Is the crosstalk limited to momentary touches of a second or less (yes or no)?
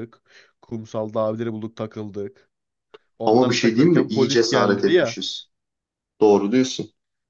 no